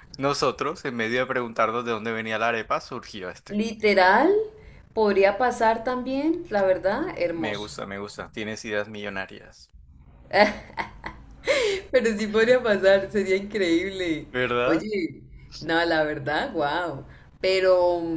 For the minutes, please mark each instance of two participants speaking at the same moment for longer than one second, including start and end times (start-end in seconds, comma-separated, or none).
none